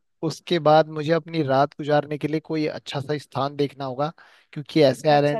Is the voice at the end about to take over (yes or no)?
yes